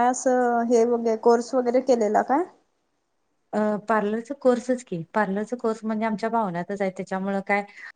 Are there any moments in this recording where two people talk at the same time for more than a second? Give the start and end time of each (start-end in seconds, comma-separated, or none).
none